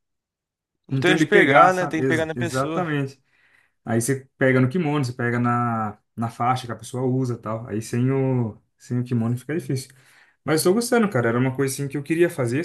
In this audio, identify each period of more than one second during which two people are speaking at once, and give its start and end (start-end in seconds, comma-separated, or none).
0.9-2.9